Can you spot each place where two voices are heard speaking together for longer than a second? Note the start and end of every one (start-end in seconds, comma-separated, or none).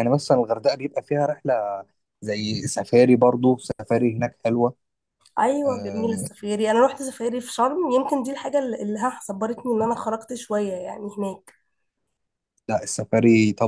none